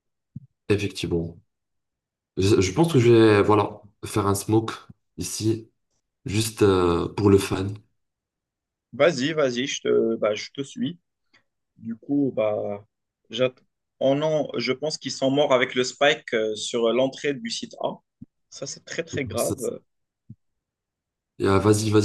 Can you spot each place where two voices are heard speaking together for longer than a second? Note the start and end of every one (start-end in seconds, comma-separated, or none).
none